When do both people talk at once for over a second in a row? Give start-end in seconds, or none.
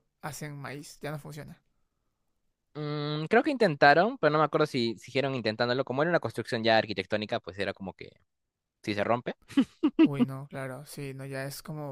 none